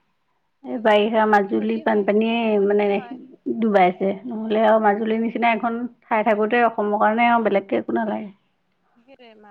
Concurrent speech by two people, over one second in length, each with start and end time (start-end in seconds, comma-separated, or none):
0.7-3.0